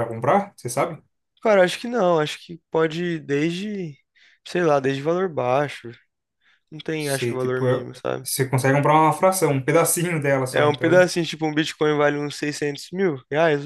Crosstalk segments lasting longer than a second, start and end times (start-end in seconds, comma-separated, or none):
7.0-8.3